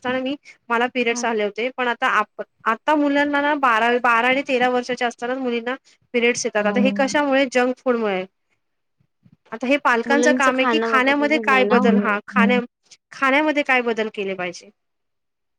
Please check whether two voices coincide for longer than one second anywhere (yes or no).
yes